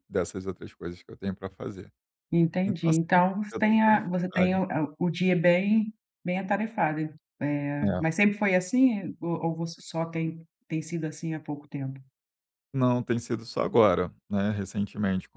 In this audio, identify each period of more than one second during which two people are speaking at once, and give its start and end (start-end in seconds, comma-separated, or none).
2.6-4.6